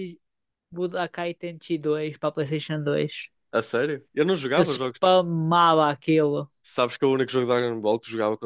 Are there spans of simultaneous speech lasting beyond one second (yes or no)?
no